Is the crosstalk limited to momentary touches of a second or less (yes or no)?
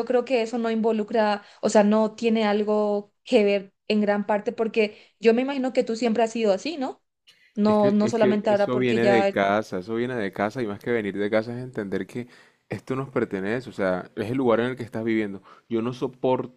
no